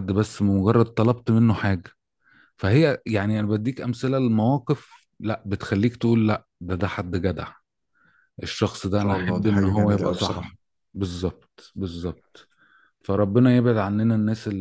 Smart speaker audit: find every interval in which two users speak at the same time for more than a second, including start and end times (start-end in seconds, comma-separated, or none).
9.0-10.5